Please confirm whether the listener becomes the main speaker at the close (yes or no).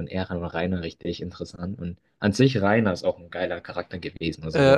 no